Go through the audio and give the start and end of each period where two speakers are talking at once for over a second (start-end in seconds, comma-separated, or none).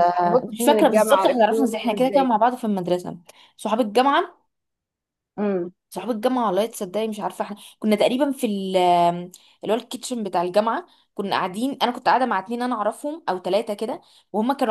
0.5-2.3